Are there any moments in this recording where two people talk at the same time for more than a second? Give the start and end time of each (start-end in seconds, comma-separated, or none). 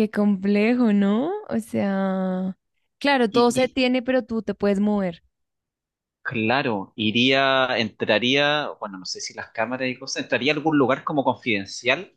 none